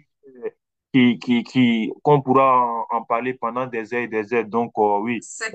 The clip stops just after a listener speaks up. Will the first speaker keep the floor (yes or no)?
yes